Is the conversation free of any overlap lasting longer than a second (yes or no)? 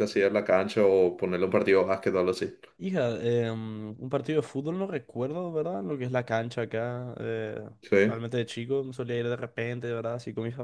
yes